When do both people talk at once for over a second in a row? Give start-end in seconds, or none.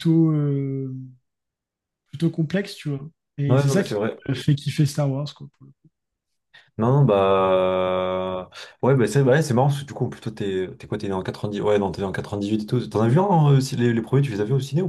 none